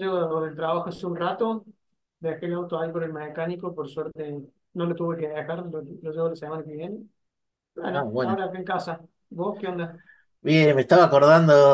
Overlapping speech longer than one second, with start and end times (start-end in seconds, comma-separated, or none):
none